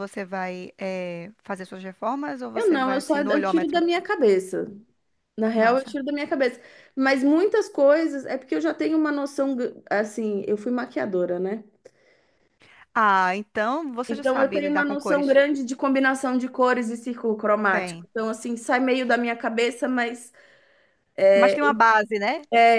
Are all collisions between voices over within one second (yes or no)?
no